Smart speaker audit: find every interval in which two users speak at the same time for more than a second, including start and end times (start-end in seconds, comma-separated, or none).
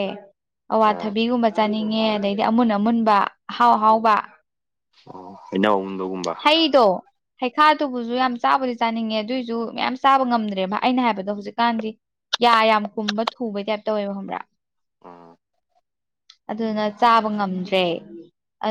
none